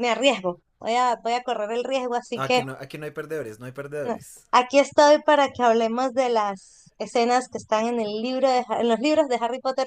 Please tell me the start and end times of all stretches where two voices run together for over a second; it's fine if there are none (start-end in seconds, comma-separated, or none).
none